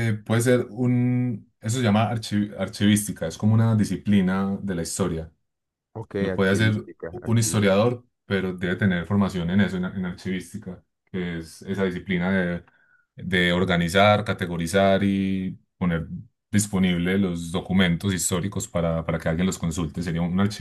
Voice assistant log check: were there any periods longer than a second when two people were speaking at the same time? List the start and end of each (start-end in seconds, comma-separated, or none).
6.2-7.9